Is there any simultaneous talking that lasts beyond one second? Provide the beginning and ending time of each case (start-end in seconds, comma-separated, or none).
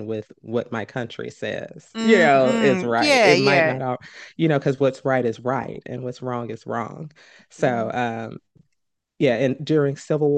1.9-3.8